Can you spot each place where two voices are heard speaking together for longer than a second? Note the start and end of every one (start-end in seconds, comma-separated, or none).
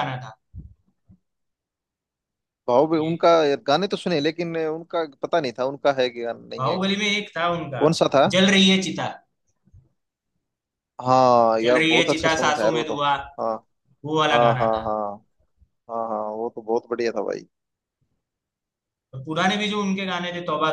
11.6-12.9